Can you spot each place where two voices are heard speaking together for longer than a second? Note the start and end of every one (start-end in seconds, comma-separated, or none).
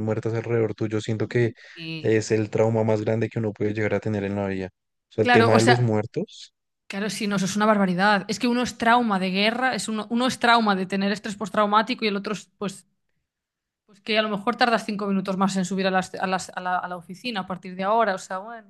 none